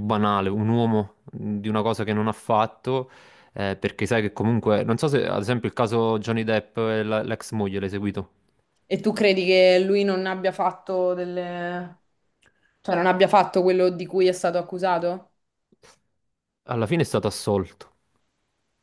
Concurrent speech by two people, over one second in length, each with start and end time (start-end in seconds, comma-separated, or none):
none